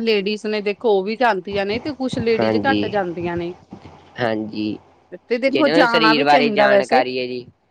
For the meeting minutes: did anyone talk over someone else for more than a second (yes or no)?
yes